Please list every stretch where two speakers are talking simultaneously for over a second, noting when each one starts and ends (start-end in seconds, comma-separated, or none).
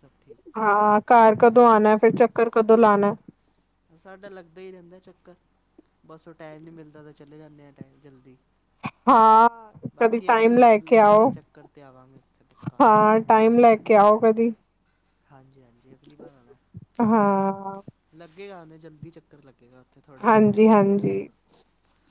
10.0-11.3